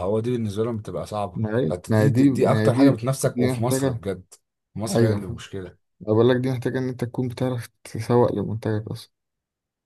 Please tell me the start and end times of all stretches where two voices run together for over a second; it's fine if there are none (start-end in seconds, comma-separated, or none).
1.4-4.0